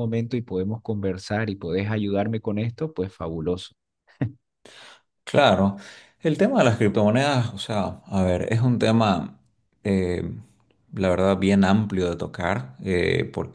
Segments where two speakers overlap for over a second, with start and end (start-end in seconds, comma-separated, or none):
none